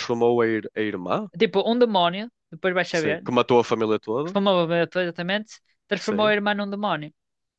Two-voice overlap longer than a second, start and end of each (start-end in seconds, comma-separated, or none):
none